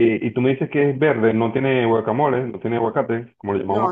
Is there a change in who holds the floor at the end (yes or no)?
yes